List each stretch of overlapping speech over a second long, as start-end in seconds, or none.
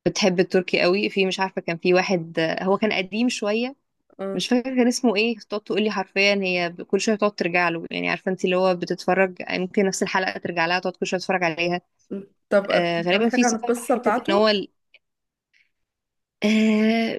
12.7-14.5